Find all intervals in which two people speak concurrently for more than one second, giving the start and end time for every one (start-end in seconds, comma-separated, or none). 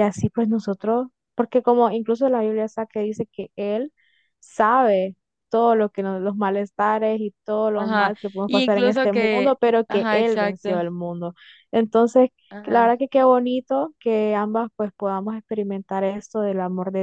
7.7-10.7